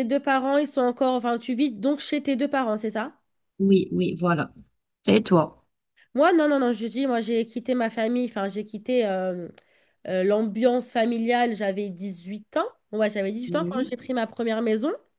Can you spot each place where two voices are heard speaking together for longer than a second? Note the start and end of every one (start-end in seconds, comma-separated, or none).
none